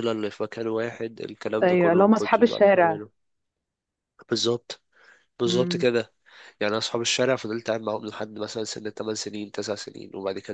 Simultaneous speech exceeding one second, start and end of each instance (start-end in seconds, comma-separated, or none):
1.6-3.0